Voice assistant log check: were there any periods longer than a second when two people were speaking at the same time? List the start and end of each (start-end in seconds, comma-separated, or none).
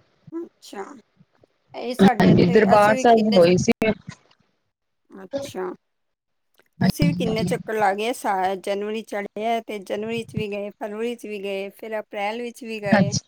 2.0-3.5